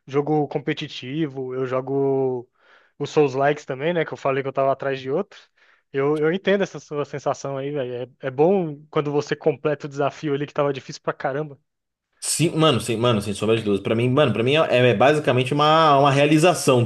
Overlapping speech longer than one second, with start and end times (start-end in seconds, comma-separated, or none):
none